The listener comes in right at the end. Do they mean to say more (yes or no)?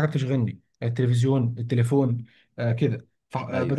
no